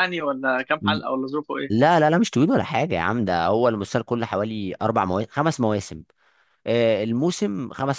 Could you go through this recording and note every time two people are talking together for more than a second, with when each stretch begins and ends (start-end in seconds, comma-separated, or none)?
none